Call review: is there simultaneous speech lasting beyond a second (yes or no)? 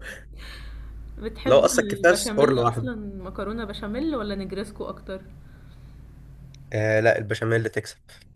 yes